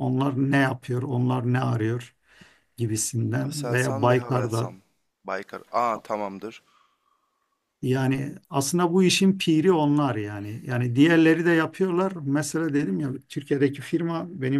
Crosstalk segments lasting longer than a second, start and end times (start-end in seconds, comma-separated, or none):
3.4-4.7